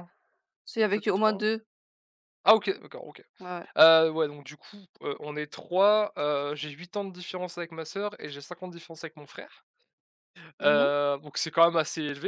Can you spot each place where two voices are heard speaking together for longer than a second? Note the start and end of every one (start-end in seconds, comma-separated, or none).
none